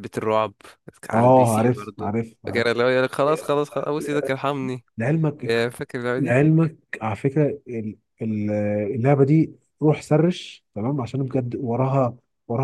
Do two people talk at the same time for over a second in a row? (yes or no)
yes